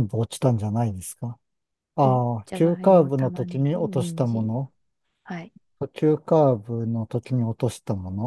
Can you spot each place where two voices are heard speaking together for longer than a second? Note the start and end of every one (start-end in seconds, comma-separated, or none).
2.0-4.5